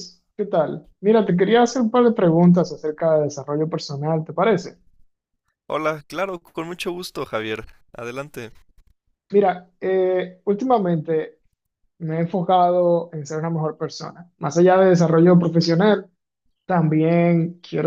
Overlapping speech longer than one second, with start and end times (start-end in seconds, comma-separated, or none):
none